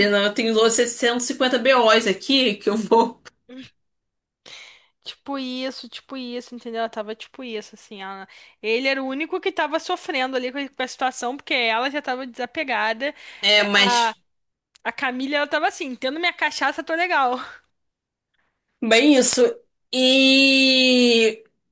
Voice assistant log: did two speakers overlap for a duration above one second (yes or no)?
no